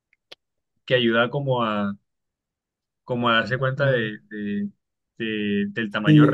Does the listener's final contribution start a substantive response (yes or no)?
yes